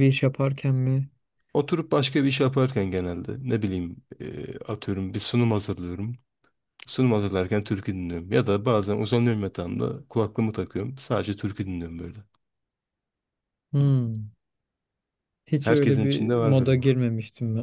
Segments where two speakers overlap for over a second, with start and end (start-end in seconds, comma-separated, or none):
15.6-16.9